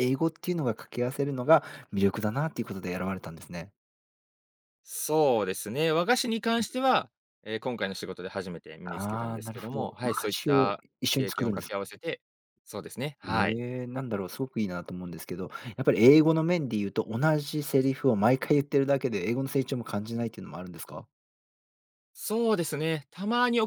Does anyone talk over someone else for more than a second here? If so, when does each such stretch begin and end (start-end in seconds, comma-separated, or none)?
8.8-11.8